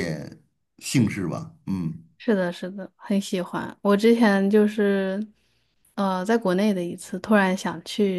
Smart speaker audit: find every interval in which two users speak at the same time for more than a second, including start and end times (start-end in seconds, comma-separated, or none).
none